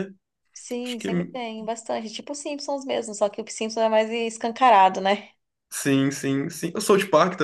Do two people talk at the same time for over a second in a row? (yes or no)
no